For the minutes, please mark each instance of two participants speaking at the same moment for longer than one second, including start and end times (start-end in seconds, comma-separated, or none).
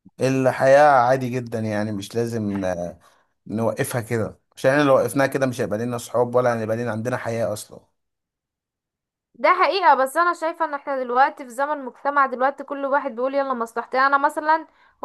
none